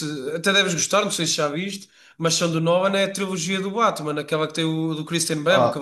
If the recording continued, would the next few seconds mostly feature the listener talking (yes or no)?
yes